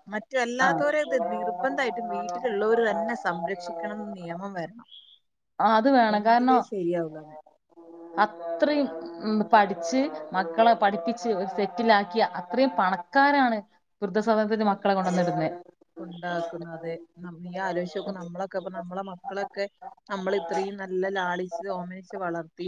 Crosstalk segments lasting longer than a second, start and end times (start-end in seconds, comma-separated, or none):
none